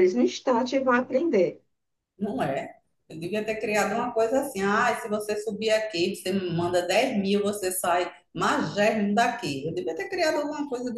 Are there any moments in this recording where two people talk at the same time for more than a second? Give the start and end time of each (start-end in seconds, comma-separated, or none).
none